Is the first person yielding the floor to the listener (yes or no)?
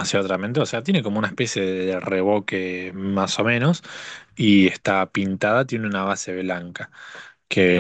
no